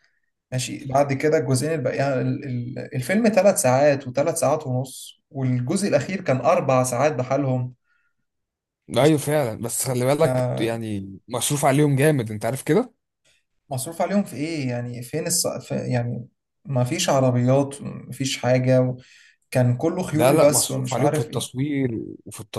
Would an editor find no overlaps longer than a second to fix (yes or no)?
no